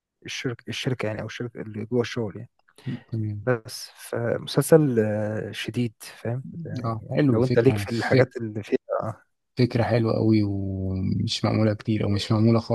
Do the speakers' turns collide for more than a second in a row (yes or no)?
yes